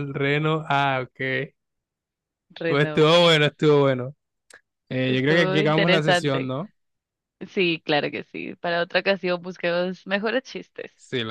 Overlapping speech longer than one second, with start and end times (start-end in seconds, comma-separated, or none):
5.0-6.5